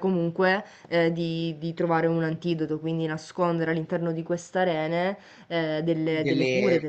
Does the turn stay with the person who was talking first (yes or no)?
no